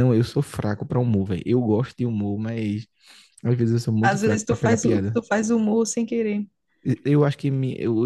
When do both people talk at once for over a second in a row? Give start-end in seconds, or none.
4.0-5.2